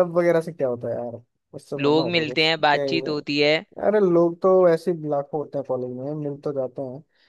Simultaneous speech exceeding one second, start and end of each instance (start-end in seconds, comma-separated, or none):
1.8-3.1